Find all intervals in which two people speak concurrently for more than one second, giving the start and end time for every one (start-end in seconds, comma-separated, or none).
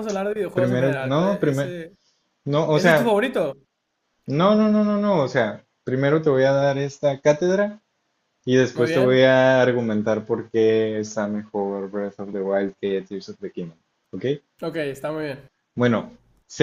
0.5-1.8